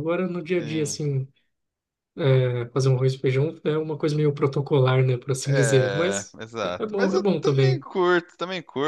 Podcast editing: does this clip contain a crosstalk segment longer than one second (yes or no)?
yes